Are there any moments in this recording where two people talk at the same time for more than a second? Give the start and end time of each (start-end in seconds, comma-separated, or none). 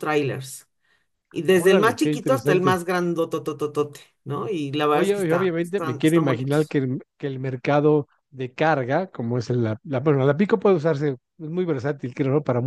1.5-2.8, 4.9-6.8